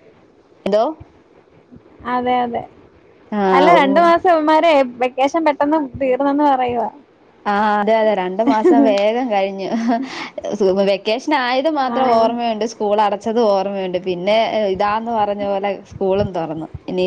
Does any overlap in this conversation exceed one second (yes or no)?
no